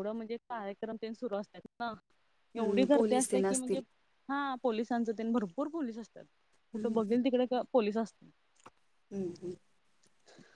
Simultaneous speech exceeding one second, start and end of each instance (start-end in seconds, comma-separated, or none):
2.6-3.8